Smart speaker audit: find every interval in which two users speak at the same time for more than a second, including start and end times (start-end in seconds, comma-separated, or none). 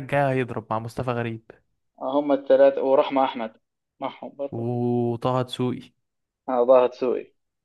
none